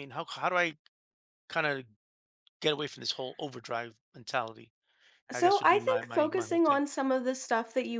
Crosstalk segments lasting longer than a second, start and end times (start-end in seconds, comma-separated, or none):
5.3-6.8